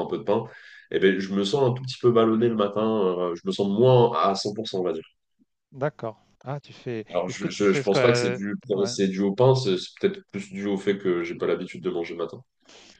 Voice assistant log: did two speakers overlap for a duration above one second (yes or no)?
yes